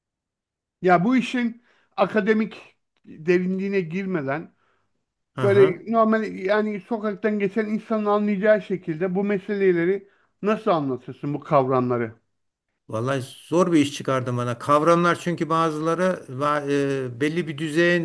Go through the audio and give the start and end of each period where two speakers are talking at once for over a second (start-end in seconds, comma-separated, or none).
none